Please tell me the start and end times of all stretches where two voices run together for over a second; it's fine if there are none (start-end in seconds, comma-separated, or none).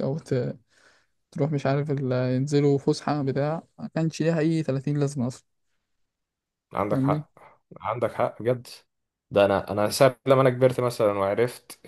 none